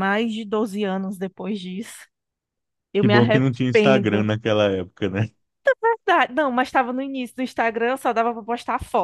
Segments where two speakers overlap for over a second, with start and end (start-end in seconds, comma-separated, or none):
3.0-4.3